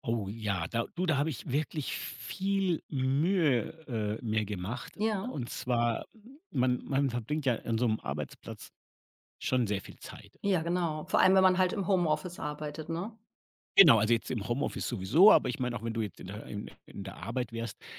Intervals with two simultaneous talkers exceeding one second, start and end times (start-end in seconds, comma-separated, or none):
none